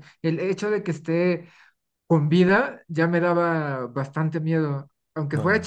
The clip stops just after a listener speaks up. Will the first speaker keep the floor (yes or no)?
yes